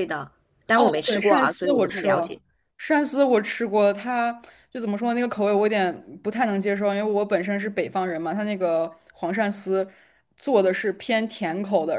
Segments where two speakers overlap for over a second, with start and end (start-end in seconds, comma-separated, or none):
0.7-2.4